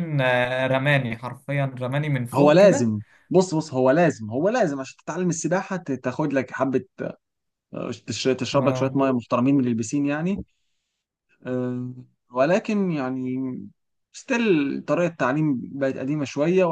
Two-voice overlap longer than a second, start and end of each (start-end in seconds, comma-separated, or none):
none